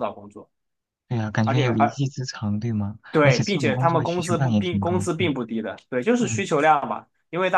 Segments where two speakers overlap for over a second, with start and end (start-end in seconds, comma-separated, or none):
3.1-5.3